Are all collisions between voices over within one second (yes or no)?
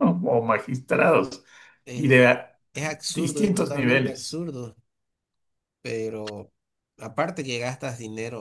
no